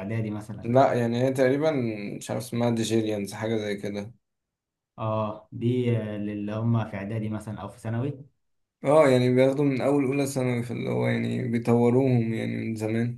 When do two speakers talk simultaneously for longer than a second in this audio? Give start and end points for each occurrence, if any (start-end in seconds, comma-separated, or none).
none